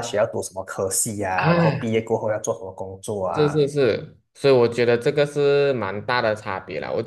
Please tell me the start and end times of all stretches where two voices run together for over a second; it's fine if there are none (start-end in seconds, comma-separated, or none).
none